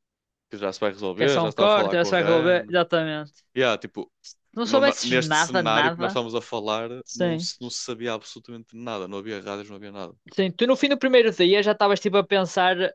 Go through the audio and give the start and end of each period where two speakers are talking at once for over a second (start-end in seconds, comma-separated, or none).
1.1-2.7, 4.6-6.2